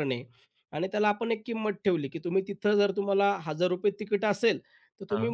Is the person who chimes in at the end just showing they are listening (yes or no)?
yes